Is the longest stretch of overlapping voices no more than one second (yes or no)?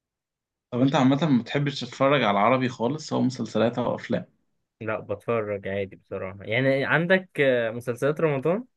yes